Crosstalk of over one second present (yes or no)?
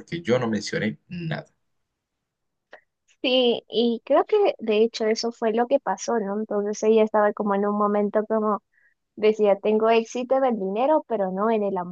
no